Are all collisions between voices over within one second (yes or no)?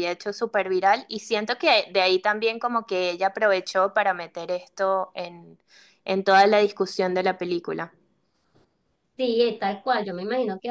yes